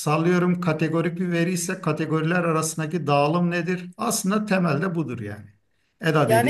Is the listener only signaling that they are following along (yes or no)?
no